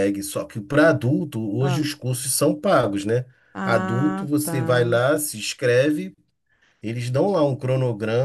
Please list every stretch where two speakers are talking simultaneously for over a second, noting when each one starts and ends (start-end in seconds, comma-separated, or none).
3.6-5.0